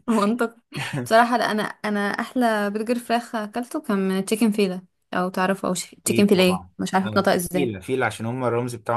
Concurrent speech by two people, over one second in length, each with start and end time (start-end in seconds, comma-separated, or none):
6.0-7.8